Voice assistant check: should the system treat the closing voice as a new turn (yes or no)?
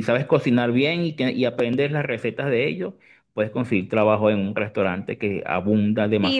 yes